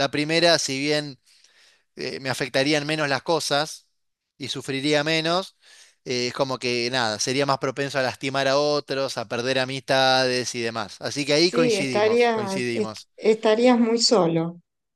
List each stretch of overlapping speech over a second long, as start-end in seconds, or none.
11.4-13.1